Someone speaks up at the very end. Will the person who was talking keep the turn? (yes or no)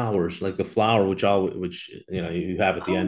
no